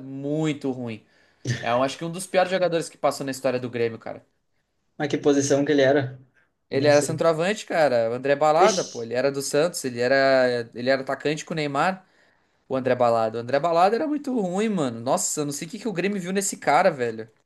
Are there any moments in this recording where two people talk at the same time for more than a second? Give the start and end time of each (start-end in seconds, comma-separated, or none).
none